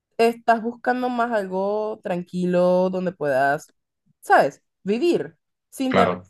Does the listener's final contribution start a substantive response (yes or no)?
no